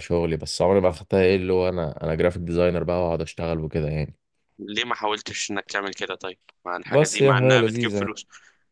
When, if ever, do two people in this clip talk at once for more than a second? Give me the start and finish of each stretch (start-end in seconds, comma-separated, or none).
6.8-8.2